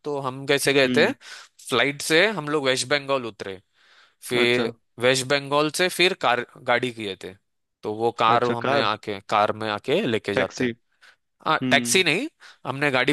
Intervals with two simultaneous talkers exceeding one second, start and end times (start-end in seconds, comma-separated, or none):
none